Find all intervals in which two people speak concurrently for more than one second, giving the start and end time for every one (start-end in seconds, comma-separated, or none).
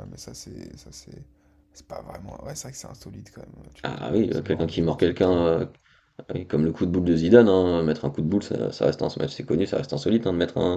3.8-5.7